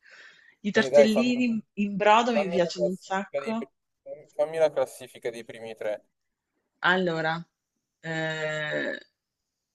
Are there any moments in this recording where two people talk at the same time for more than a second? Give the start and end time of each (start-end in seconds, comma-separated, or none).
2.3-3.6